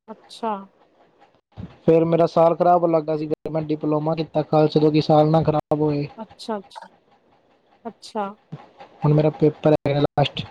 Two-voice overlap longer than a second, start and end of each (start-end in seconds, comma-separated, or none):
none